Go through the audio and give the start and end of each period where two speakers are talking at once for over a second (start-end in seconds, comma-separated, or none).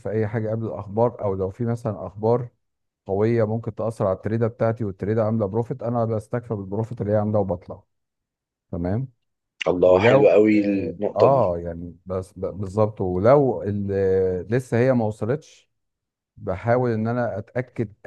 9.8-11.6